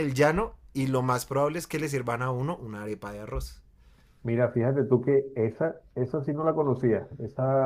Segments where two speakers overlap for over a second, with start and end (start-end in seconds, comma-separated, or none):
none